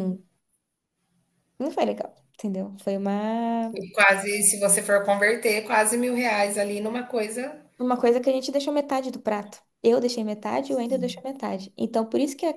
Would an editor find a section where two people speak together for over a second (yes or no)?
no